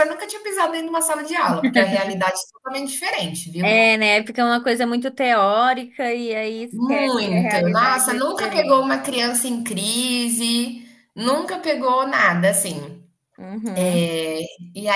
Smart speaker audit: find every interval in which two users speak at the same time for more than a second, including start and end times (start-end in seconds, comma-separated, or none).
6.7-8.8